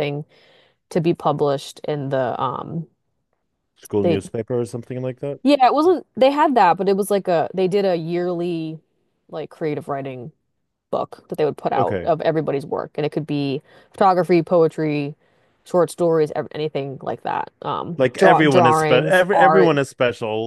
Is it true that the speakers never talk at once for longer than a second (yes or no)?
no